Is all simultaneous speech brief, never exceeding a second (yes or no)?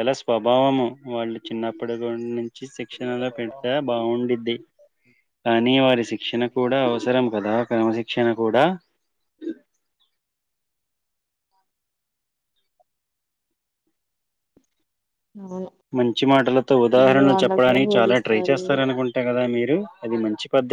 no